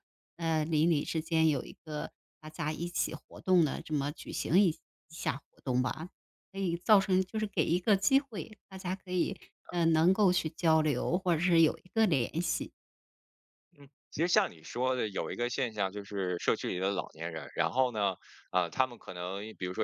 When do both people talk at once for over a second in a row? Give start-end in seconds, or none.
none